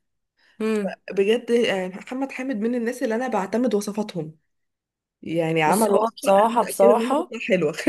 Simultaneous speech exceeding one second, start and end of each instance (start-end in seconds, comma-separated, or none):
5.7-7.3